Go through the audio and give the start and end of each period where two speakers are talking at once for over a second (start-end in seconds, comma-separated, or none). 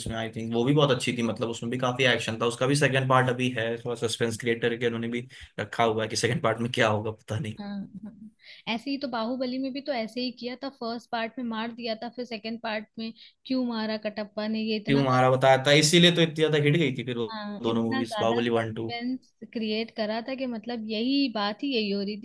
17.6-18.9